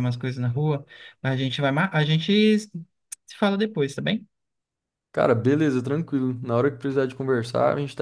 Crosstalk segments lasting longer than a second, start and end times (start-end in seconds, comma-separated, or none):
none